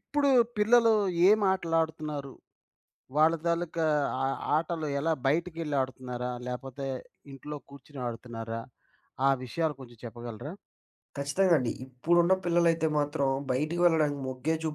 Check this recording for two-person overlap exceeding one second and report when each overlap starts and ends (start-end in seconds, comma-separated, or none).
none